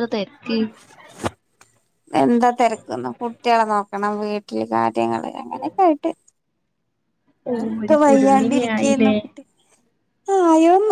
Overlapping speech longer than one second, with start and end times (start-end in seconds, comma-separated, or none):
7.6-9.1